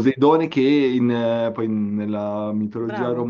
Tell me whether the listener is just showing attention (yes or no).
yes